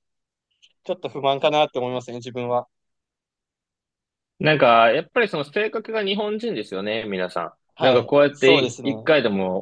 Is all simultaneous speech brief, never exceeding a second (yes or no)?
no